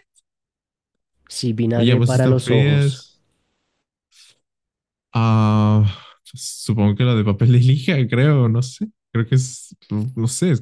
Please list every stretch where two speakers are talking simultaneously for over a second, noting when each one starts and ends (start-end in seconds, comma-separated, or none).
1.8-3.0